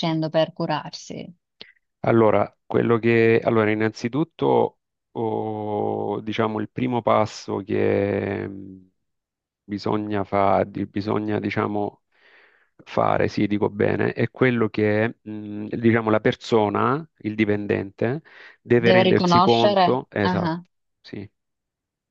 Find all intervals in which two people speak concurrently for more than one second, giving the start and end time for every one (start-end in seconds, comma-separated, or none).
18.8-20.5